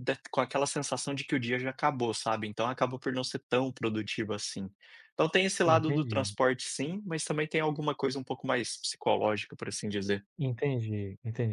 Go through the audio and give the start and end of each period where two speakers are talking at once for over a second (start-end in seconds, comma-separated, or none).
none